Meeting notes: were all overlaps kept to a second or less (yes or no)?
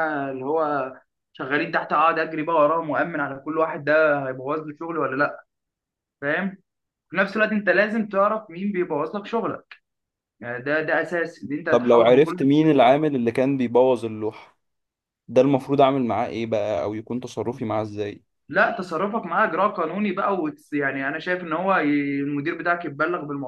no